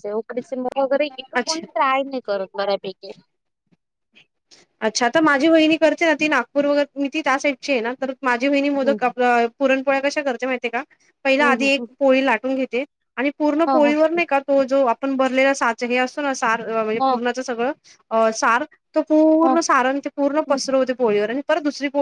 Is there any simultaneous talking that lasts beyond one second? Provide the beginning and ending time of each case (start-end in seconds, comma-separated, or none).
none